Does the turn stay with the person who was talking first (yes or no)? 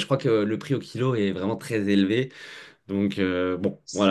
no